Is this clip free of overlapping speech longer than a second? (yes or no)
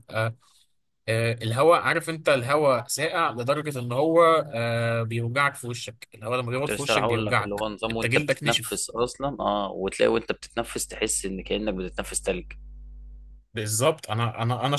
no